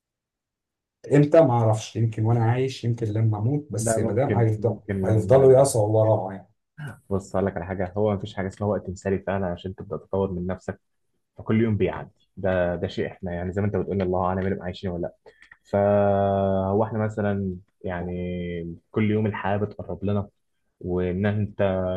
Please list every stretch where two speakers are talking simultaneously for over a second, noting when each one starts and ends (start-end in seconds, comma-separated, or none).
3.8-5.5